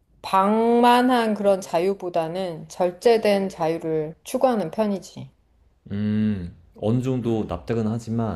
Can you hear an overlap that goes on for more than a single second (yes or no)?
no